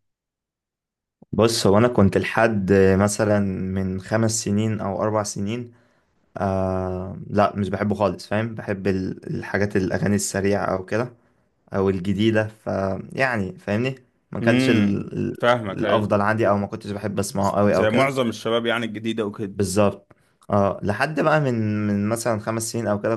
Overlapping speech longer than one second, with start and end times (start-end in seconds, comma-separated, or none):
14.4-16.1